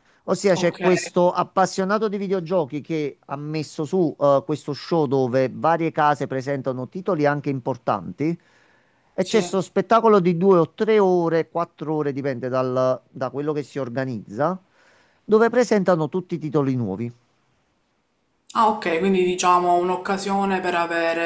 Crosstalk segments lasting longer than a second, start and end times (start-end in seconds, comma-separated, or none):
none